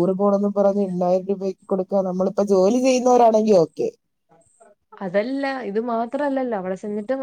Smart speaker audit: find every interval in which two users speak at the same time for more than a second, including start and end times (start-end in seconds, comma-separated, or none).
none